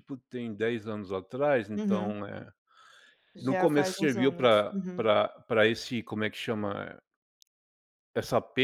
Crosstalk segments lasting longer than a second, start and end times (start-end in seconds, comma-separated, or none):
3.4-5.1